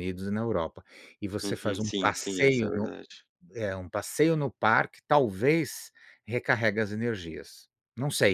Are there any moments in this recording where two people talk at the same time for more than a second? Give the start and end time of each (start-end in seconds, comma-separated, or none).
1.4-2.9